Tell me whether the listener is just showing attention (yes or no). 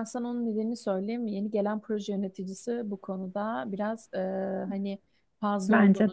yes